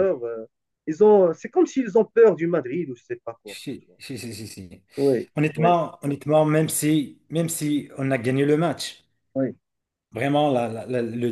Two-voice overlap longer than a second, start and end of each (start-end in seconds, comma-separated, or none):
none